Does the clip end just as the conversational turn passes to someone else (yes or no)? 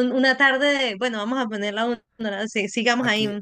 yes